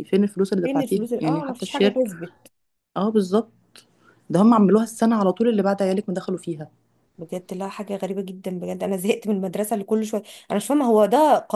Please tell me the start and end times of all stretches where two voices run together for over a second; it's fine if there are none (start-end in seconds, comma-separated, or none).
0.6-1.9